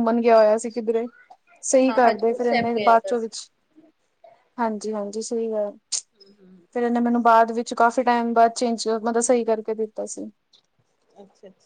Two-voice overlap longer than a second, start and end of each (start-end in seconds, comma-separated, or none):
1.9-3.3